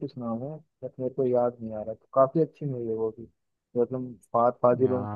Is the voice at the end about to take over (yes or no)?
no